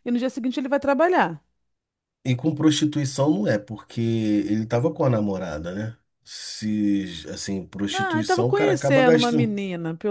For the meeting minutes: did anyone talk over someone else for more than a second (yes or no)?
yes